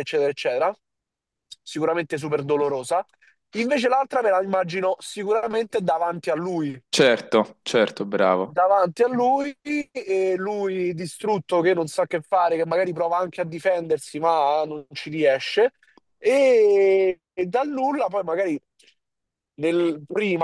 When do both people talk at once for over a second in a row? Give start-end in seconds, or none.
none